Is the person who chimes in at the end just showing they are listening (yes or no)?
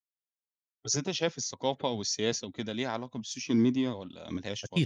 no